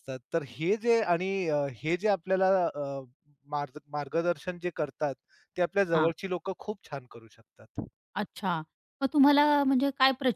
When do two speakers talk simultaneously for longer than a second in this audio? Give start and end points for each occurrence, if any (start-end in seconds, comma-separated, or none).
none